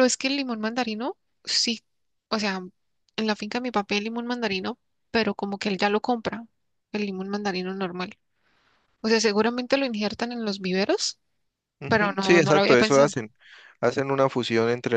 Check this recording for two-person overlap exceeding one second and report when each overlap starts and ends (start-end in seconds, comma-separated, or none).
11.9-13.1